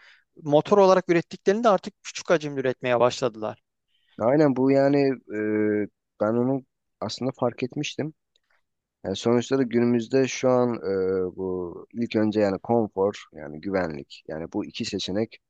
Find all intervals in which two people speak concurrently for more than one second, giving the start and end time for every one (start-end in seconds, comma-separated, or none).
none